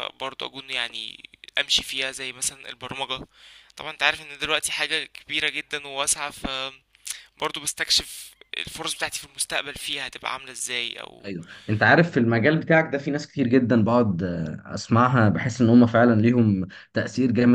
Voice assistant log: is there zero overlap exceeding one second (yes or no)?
yes